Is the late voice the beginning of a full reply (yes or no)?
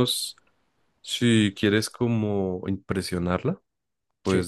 no